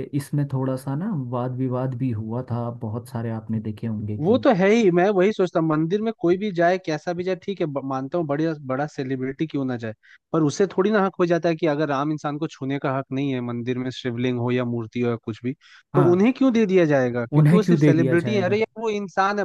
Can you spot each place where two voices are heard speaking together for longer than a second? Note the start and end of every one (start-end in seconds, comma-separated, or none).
17.4-18.6